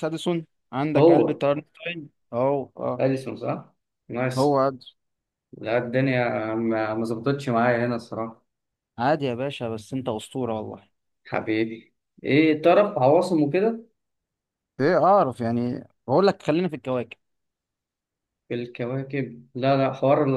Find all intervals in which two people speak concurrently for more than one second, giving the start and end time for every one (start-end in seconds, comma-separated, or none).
none